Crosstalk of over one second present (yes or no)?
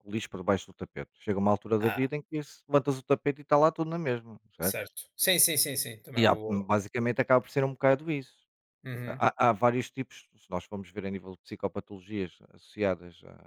no